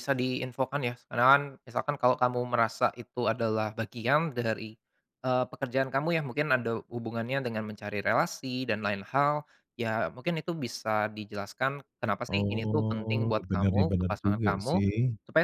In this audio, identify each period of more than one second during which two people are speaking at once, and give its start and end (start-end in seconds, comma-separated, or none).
12.3-14.8